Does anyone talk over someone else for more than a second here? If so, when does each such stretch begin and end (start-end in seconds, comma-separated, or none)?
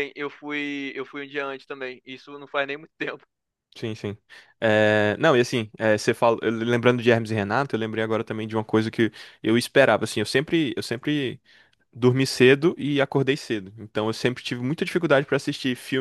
none